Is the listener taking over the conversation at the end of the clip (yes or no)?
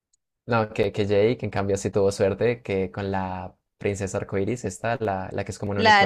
yes